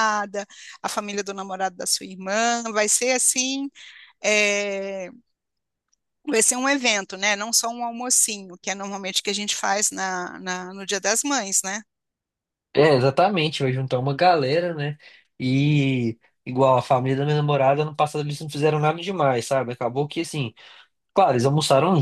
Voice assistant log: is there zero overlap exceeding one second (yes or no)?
yes